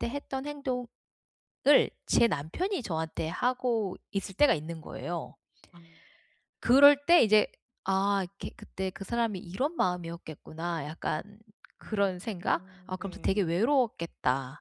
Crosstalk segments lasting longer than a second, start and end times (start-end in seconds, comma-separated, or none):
11.8-13.6